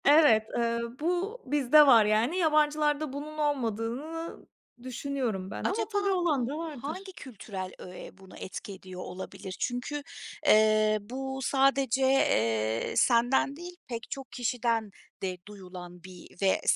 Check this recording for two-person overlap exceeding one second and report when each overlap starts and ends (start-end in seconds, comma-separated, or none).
5.6-7.1